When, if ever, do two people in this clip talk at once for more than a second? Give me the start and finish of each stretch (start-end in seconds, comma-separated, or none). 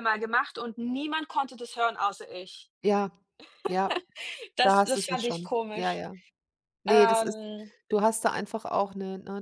4.6-6.0